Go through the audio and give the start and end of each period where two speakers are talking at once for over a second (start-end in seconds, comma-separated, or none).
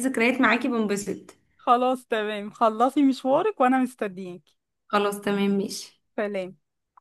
none